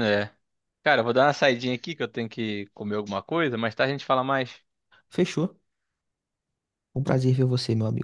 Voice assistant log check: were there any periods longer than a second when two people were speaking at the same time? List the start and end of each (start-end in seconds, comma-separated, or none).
none